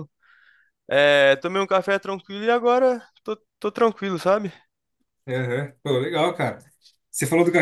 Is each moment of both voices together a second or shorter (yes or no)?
yes